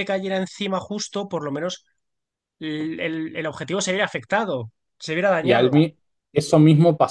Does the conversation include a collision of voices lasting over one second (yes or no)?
no